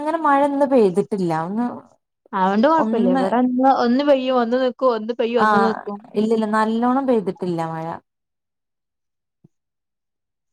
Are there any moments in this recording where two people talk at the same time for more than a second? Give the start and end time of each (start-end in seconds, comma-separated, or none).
none